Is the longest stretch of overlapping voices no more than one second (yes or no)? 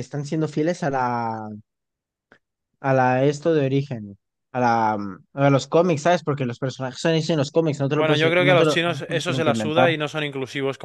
no